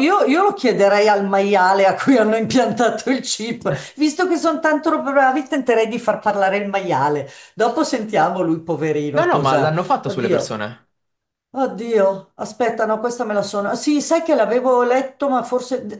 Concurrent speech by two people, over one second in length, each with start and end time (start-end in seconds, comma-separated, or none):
9.2-10.6